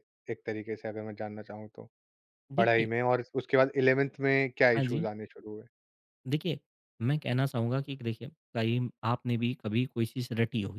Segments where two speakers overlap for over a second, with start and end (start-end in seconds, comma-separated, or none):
none